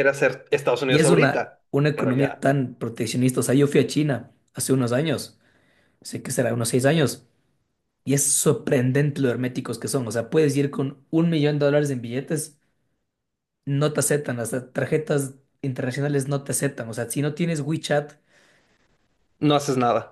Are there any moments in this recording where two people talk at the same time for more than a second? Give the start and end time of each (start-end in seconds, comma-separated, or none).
0.9-2.5